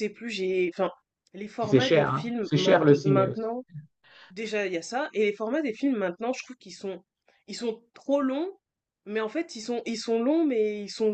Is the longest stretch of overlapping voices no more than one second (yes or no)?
no